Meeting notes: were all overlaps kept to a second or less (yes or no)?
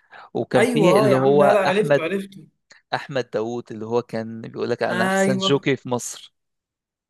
no